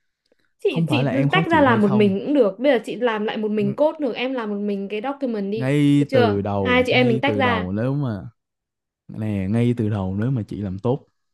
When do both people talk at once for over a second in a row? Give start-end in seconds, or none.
0.7-2.1, 5.5-7.7